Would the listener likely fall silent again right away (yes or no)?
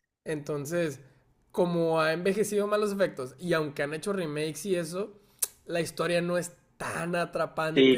yes